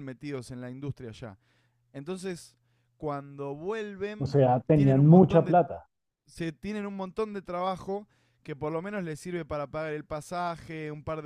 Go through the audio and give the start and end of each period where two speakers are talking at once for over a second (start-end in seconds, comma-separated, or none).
4.2-5.5